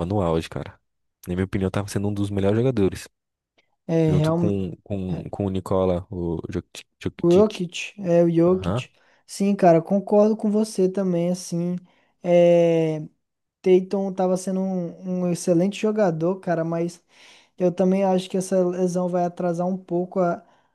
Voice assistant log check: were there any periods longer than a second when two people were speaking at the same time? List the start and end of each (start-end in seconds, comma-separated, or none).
none